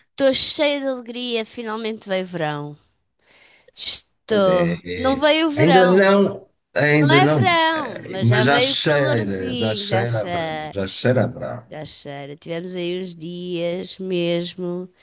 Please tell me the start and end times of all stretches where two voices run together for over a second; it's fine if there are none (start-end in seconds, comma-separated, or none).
4.3-6.2, 7.0-10.8